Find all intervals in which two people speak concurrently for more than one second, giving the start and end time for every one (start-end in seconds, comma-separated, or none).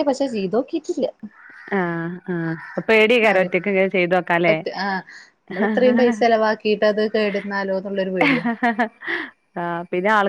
none